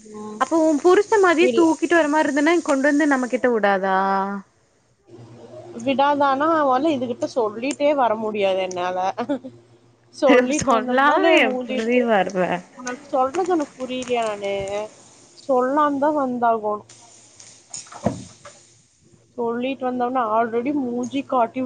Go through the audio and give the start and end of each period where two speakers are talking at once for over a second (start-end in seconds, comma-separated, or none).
10.6-12.0